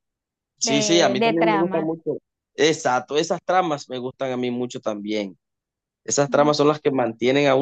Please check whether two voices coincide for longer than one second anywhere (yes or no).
yes